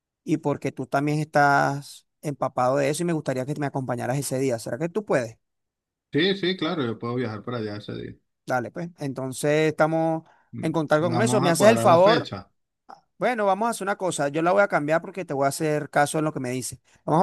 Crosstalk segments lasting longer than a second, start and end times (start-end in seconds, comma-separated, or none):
10.6-12.3